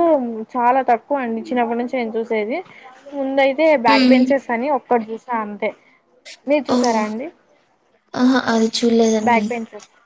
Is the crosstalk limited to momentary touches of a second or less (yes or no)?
yes